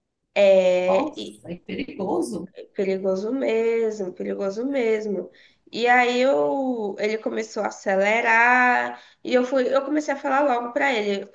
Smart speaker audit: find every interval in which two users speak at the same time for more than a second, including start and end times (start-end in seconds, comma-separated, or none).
none